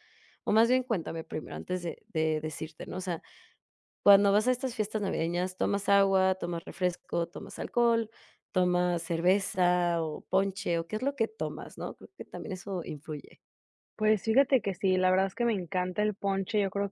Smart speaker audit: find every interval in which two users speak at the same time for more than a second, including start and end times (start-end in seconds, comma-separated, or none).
none